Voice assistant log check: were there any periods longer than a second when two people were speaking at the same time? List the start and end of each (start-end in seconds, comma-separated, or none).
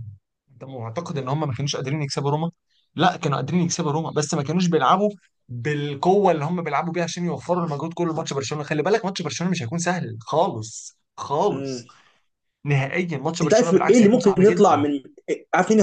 13.4-14.8